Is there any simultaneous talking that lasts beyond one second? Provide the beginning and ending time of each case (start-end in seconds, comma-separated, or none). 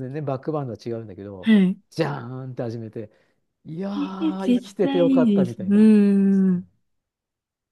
4.0-5.8